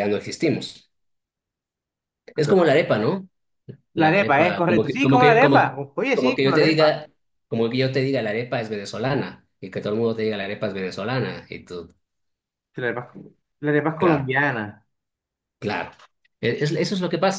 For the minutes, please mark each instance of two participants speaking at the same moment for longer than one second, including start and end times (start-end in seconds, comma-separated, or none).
4.0-7.0